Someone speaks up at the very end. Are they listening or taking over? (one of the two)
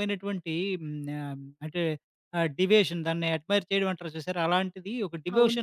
taking over